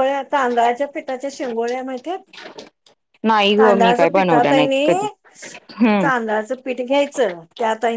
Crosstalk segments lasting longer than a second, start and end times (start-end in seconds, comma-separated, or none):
3.6-4.9